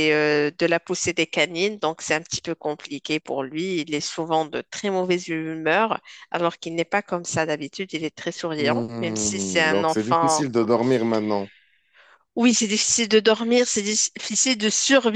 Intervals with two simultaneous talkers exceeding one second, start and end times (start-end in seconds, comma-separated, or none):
8.6-10.4